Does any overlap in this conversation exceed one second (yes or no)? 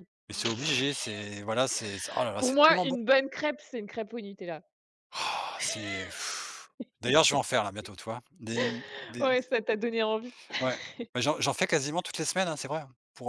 no